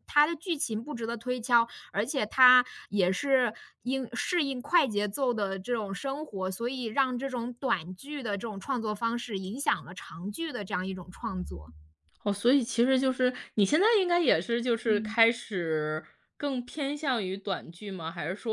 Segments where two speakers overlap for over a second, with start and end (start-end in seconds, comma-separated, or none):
none